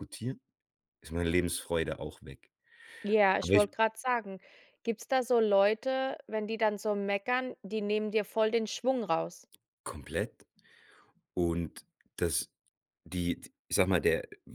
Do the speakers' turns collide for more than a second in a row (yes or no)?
no